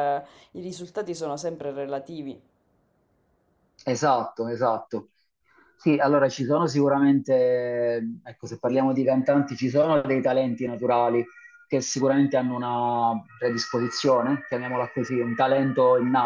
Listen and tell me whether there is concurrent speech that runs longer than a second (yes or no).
no